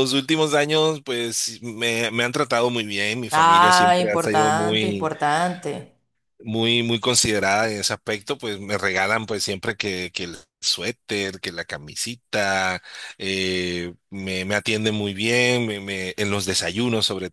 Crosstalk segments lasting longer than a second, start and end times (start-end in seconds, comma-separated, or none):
3.3-5.1